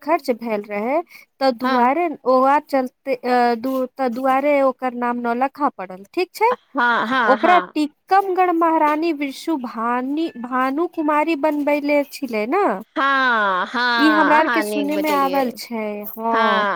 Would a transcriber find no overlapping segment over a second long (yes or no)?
no